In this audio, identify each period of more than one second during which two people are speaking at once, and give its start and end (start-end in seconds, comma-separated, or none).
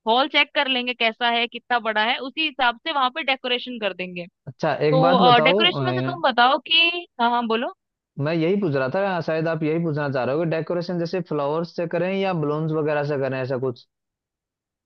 4.9-6.2